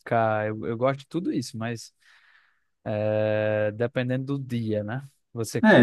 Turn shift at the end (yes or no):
yes